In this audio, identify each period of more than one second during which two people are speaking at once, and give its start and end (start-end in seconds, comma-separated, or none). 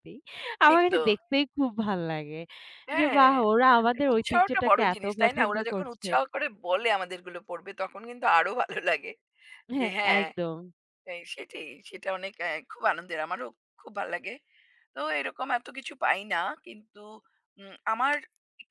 4.1-6.1